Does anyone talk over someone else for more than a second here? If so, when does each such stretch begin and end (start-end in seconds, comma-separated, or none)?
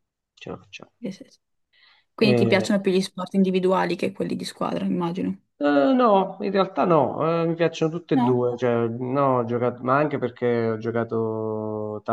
none